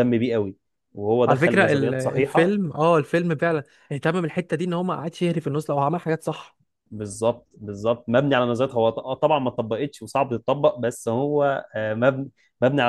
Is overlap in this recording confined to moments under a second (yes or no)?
no